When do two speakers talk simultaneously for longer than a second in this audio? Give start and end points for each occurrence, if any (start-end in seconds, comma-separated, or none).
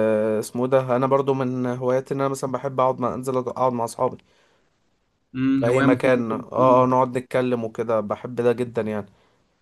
5.6-6.9